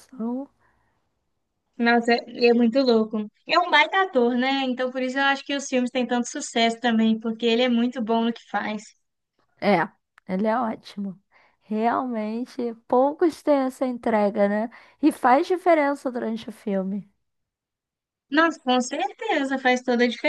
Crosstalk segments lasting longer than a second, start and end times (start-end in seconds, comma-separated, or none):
none